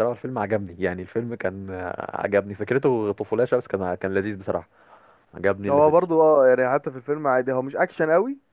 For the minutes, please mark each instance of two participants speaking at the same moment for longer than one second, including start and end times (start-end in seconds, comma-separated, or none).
none